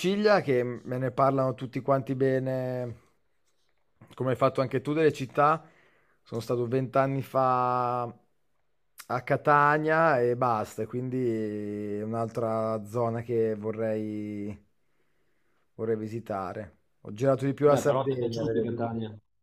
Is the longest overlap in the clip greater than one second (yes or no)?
yes